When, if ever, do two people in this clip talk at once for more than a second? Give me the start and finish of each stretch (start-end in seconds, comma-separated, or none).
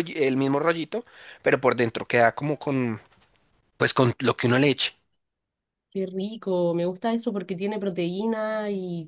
none